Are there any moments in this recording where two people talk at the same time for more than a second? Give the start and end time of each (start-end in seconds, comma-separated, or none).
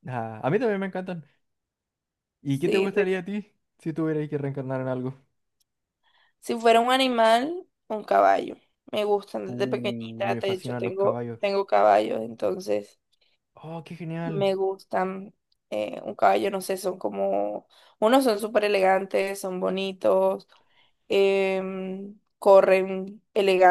9.5-11.4